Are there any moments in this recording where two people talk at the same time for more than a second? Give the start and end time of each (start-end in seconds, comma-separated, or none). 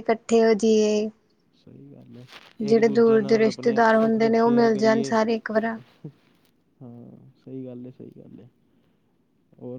3.3-5.1